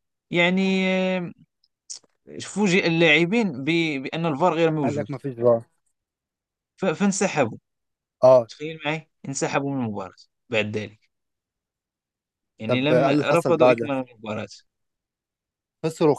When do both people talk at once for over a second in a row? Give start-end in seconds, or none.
12.7-13.9